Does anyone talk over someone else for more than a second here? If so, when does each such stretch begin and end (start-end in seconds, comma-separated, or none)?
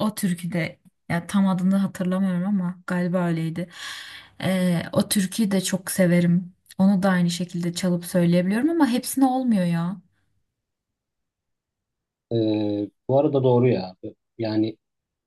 none